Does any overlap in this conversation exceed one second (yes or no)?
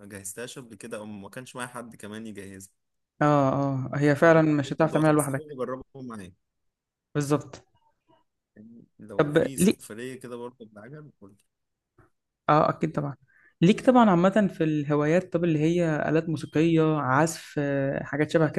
yes